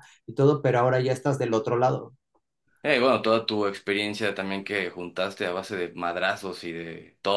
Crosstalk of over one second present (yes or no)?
no